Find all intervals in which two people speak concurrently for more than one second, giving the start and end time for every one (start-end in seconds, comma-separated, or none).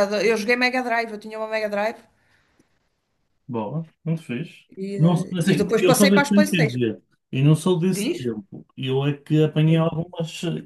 4.8-6.8